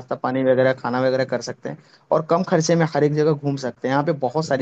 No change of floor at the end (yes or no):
yes